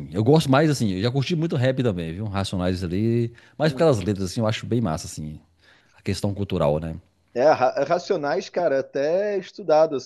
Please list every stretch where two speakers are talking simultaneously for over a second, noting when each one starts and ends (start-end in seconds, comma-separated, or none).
none